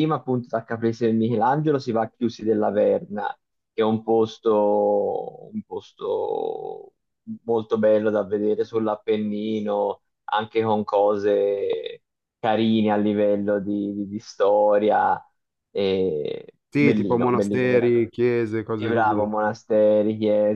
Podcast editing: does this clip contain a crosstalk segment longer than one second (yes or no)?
yes